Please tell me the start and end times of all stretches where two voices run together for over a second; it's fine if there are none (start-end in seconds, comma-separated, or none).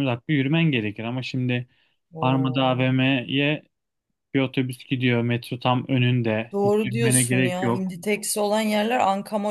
6.5-7.9